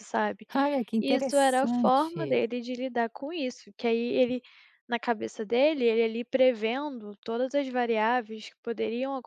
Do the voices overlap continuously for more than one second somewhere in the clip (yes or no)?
yes